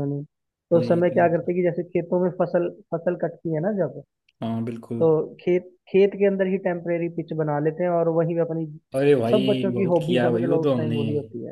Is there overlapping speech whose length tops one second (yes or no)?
yes